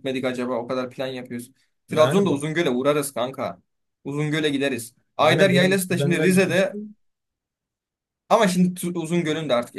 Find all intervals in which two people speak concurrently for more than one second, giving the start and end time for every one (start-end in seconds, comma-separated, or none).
5.2-6.7